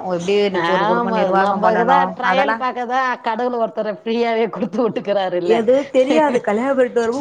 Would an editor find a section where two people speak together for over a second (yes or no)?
yes